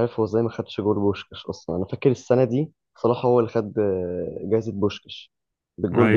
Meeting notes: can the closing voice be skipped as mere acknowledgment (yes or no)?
yes